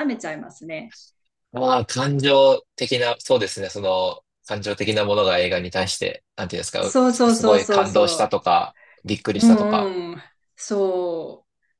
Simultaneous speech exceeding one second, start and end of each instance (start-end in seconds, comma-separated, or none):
6.8-8.3